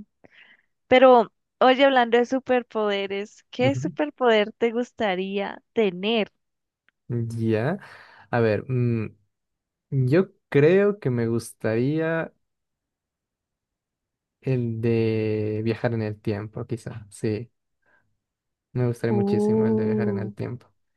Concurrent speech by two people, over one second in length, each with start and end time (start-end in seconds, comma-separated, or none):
19.1-20.3